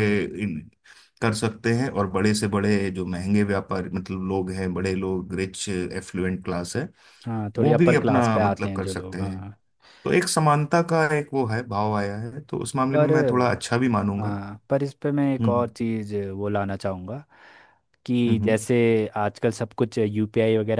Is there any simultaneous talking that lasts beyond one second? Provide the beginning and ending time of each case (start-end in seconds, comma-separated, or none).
7.6-9.4